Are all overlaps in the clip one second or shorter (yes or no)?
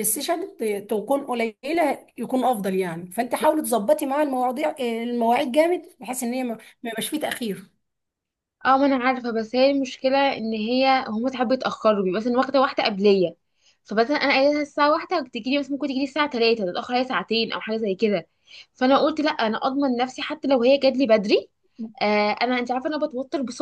yes